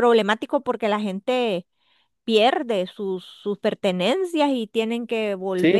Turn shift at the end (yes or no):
yes